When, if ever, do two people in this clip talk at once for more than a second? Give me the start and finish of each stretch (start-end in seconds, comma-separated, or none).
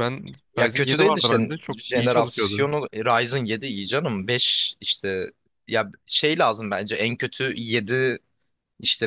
0.6-2.7